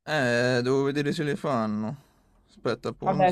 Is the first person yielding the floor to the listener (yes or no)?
yes